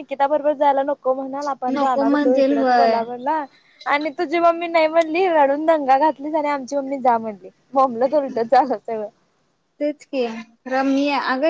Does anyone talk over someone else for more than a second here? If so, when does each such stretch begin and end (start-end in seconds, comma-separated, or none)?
1.7-3.0